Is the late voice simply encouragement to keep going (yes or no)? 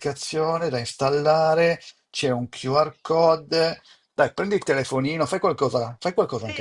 no